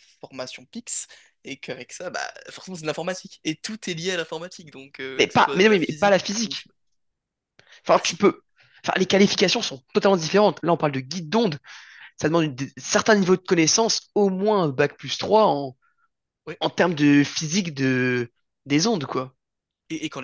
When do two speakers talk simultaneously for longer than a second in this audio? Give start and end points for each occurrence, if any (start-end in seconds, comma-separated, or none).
5.2-6.7